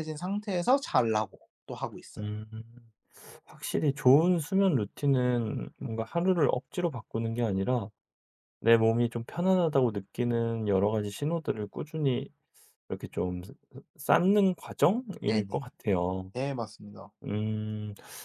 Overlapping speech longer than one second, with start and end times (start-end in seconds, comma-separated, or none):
none